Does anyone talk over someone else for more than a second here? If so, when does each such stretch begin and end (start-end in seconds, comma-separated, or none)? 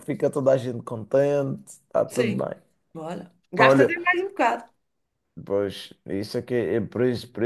none